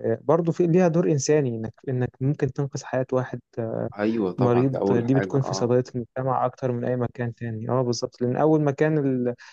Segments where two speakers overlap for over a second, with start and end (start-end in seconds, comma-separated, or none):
4.4-5.7